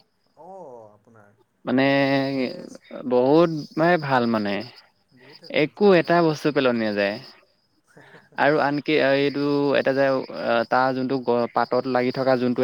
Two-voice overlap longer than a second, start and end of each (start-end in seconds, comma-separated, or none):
none